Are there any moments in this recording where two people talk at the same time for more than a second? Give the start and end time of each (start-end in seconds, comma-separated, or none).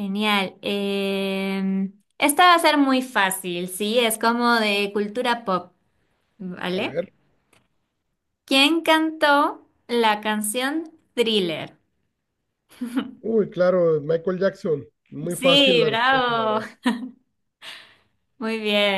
15.3-16.6